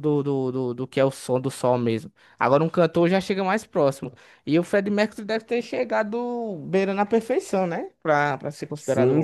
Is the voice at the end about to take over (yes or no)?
yes